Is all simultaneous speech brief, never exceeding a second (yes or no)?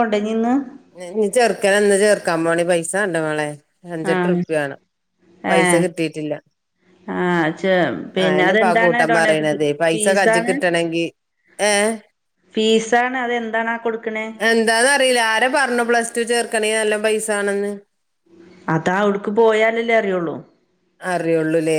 no